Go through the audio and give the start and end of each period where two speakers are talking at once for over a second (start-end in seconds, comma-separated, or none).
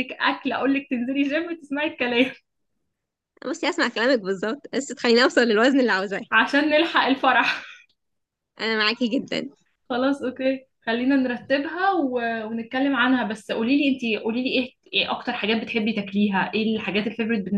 none